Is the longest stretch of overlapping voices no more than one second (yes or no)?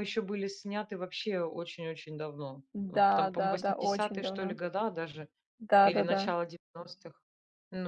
no